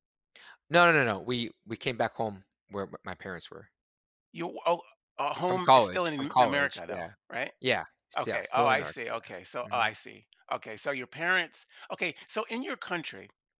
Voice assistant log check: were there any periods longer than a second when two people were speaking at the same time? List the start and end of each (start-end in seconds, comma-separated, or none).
5.5-7.1, 8.2-9.9